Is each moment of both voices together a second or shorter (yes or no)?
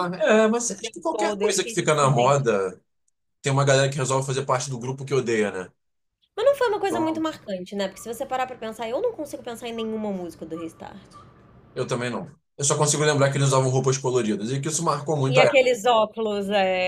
no